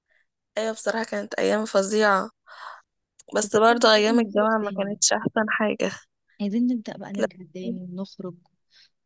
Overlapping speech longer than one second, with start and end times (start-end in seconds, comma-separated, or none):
3.4-5.0